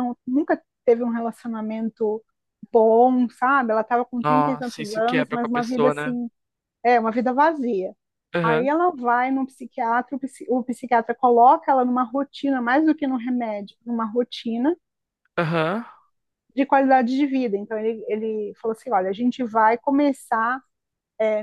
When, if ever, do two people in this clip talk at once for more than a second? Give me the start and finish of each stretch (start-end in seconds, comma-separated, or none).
4.2-6.2